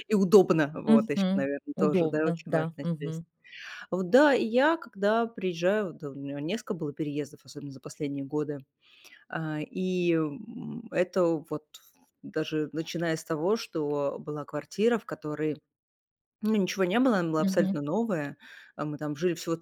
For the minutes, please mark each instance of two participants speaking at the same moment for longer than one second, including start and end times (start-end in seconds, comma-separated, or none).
0.9-3.2